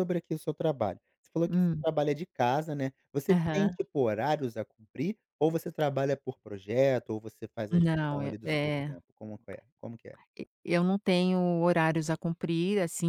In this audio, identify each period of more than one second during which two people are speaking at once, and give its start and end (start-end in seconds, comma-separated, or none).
7.7-8.9